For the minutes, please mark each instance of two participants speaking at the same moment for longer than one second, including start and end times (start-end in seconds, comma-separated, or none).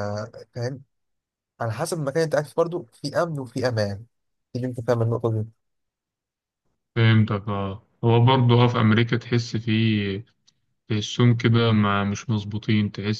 none